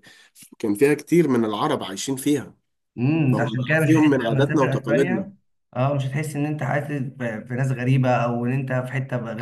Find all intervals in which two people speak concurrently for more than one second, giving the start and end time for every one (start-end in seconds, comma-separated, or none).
3.3-5.3